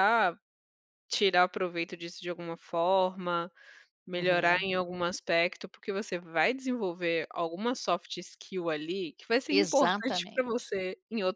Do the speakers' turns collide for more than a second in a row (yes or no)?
yes